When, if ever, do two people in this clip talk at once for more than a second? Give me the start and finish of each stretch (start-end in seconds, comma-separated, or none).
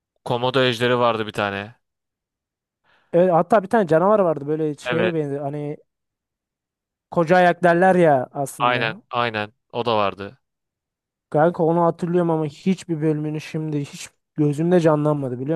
none